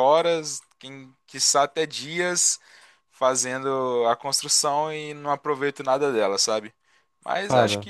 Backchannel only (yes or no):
yes